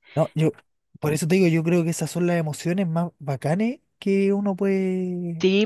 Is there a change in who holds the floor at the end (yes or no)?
yes